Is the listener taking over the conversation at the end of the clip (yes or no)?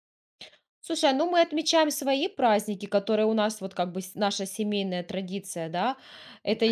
no